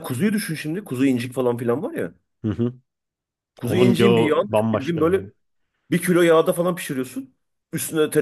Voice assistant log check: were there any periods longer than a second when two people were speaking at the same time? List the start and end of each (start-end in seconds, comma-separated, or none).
3.6-5.3